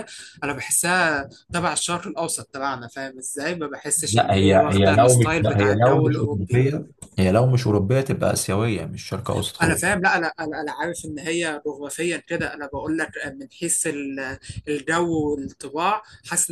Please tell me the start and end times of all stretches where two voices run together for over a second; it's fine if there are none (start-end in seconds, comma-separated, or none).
4.1-6.6